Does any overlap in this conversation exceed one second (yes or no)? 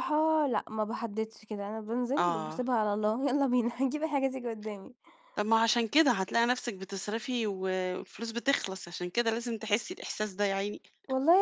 no